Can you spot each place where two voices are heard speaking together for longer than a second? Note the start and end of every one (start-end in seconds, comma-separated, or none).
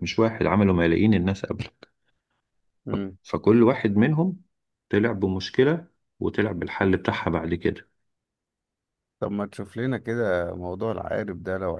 none